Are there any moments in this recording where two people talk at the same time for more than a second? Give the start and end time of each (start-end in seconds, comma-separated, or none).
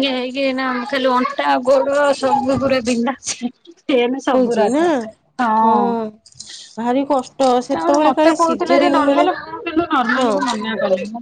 7.7-9.2